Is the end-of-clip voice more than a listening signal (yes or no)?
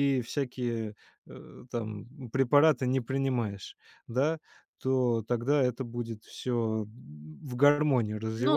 no